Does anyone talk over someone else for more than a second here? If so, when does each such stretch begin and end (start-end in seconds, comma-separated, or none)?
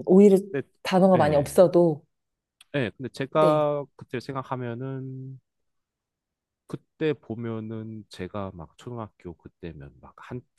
none